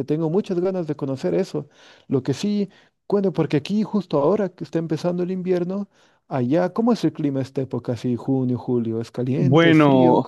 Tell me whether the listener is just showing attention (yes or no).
no